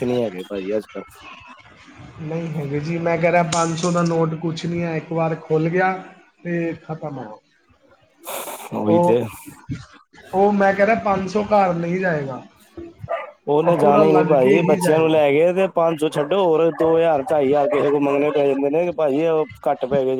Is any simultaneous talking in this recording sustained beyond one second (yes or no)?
yes